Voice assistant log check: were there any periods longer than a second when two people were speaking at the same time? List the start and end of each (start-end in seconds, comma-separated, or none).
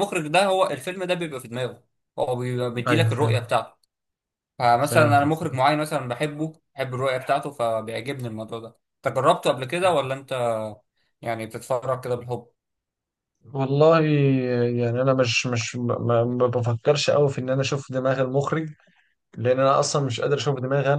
none